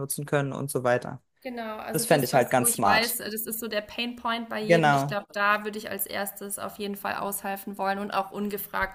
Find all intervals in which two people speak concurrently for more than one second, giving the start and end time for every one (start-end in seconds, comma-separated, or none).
1.9-3.2